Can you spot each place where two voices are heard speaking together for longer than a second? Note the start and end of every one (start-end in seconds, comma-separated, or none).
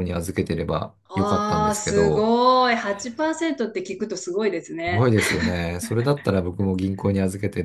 1.1-2.3